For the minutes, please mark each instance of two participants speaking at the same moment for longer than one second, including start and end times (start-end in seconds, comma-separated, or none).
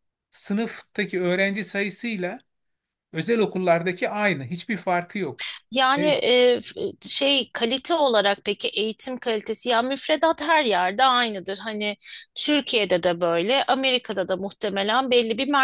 none